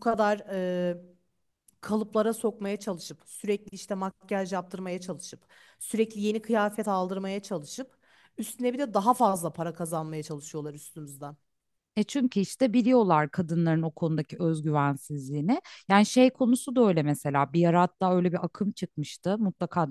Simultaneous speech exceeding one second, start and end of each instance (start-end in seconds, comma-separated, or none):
none